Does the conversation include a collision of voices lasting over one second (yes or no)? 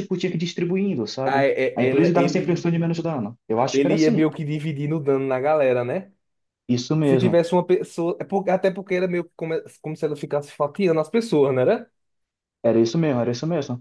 yes